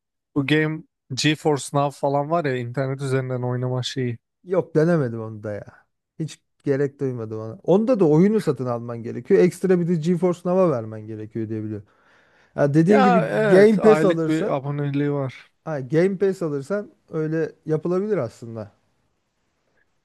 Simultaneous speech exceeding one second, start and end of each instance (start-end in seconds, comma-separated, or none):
12.9-14.6